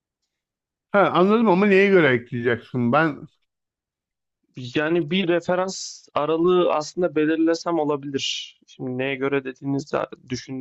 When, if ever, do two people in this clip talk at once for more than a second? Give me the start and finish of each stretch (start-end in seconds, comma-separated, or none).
none